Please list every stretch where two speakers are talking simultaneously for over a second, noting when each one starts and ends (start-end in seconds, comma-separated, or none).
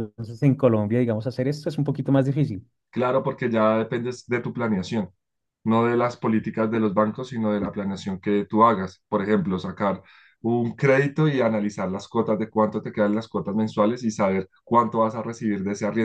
none